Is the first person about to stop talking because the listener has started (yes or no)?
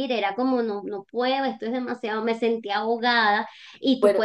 no